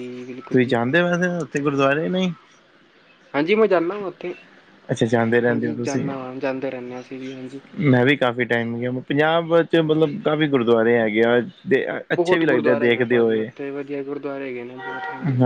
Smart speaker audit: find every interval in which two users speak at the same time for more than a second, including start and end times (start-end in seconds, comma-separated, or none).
12.2-13.5